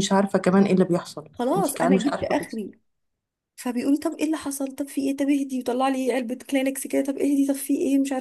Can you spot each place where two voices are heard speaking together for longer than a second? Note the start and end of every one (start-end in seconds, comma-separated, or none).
1.3-2.6